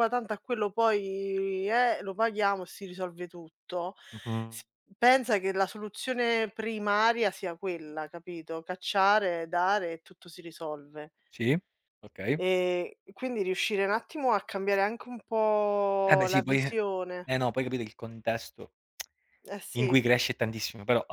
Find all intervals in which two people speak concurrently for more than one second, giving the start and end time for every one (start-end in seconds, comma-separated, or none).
none